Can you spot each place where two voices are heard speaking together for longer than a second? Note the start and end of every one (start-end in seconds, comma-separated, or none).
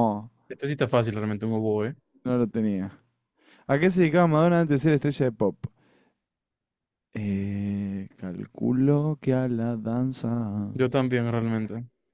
none